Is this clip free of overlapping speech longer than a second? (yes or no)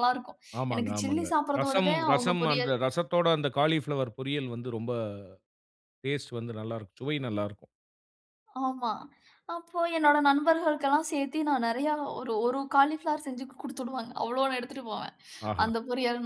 no